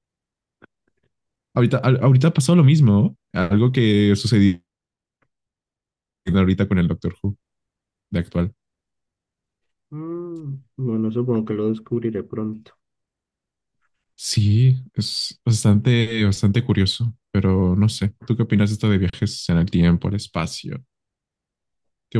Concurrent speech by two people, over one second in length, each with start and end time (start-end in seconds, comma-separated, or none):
none